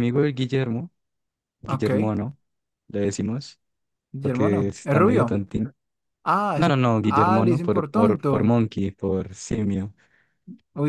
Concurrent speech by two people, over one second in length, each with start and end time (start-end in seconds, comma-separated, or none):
4.2-5.4, 6.5-8.5